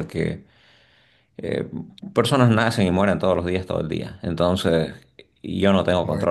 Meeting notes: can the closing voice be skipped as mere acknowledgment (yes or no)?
yes